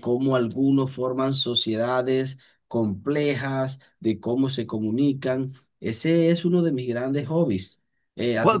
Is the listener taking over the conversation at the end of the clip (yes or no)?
yes